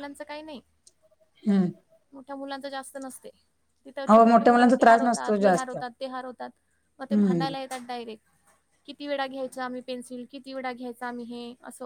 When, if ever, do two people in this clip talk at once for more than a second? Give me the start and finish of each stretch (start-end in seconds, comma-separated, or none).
4.1-5.8